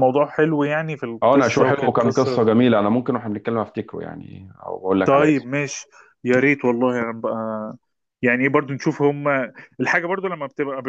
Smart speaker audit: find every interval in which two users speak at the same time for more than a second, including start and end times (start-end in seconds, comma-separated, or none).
1.2-2.5